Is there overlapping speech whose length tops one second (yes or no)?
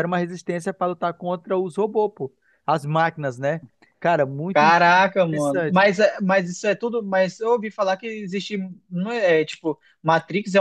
yes